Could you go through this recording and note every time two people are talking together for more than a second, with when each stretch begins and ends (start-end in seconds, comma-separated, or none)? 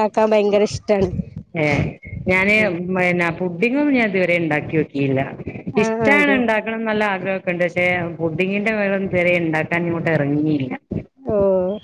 none